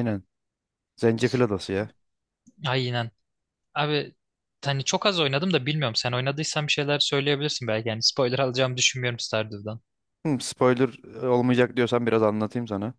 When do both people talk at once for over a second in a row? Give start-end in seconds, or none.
none